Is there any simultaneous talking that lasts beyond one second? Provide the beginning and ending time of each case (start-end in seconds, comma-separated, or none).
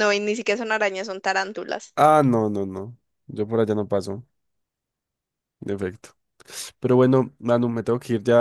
none